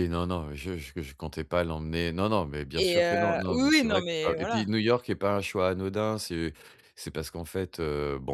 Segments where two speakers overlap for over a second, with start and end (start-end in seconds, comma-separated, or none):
2.8-4.7